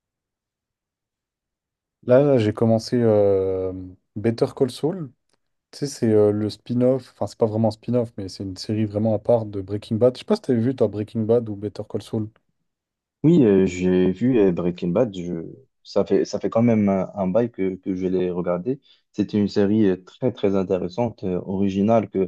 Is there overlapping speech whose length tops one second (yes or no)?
no